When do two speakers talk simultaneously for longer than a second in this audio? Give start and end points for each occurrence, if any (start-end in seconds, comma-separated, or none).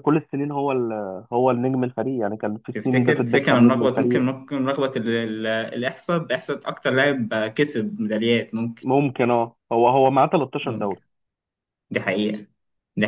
2.7-4.3